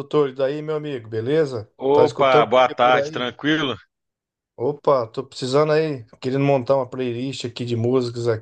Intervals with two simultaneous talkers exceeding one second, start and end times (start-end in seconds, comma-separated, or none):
1.8-3.3